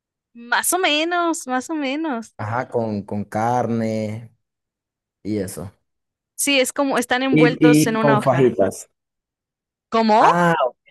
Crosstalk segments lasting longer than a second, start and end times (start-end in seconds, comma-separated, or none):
7.3-8.6